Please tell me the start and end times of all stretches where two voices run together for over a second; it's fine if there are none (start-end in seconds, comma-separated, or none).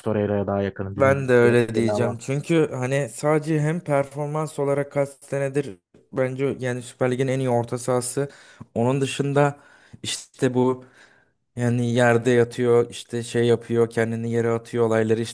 0.9-2.2